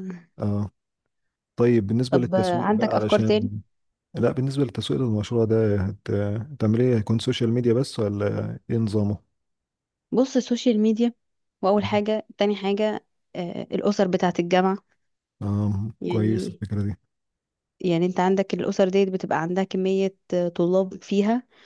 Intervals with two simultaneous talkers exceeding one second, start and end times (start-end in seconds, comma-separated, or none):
2.1-3.5